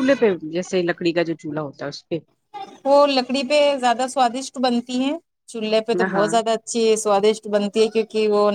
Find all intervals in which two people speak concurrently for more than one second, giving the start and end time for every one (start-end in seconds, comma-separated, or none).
none